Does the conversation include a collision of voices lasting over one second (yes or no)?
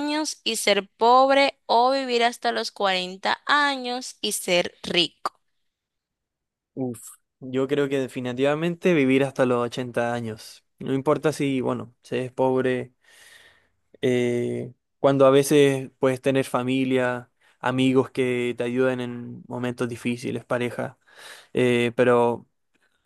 no